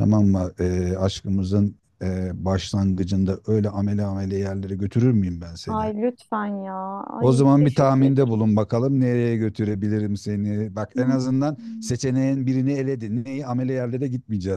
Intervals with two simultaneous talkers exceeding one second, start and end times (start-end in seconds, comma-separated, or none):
7.2-8.4